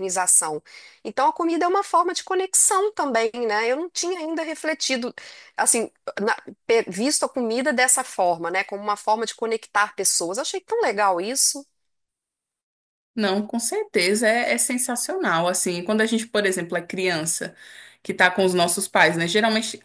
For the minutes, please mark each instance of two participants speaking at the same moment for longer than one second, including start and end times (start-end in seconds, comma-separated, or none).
none